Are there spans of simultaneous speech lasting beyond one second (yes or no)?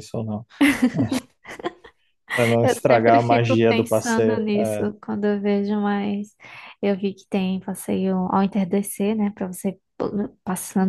yes